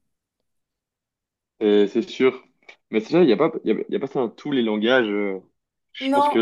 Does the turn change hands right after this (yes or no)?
yes